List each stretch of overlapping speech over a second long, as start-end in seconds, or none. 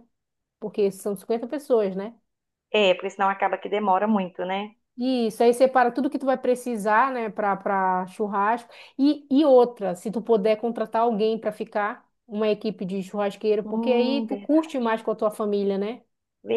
13.6-14.9